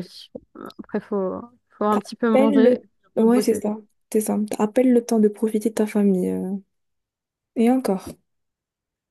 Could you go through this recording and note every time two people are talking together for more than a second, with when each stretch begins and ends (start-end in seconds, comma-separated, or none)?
1.9-3.6